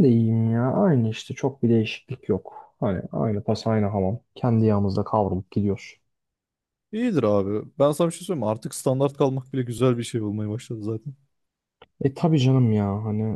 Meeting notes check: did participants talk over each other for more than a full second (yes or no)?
no